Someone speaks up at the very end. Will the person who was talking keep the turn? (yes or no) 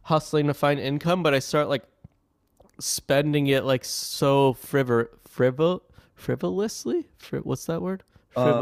no